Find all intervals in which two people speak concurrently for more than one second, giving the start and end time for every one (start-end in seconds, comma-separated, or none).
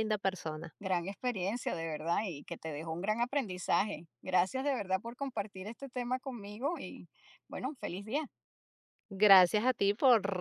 none